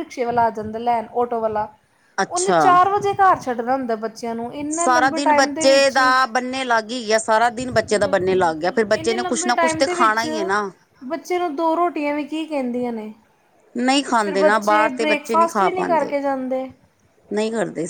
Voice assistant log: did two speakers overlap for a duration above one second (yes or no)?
yes